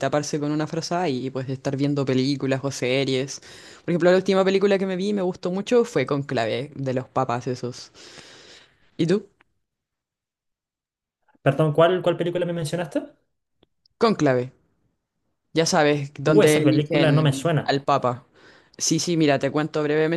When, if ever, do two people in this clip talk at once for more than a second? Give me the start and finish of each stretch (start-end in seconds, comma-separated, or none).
16.2-17.8